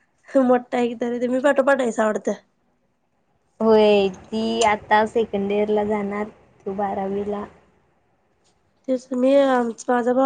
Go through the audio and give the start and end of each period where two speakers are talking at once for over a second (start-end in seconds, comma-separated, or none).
none